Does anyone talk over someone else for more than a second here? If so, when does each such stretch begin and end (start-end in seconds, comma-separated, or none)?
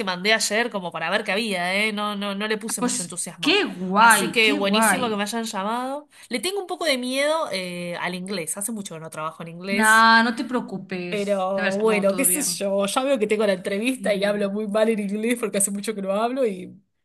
2.8-5.2, 11.1-12.6